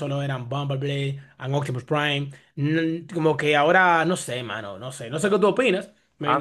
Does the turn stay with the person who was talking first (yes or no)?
no